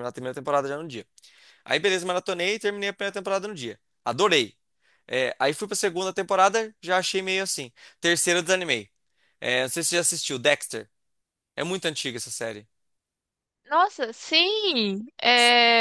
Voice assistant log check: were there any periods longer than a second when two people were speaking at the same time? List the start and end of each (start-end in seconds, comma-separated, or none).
none